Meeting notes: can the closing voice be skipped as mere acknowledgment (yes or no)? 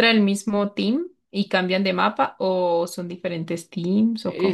no